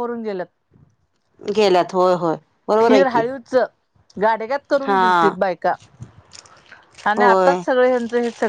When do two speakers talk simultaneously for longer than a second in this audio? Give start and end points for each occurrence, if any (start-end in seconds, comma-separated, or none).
none